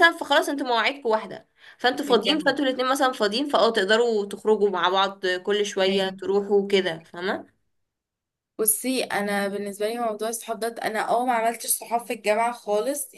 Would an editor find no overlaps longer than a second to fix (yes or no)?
yes